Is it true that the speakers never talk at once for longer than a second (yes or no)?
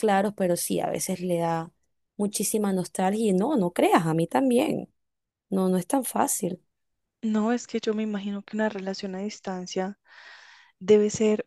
yes